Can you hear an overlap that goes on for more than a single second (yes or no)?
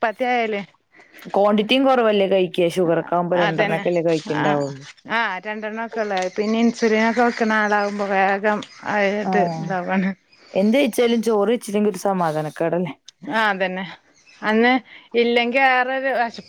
no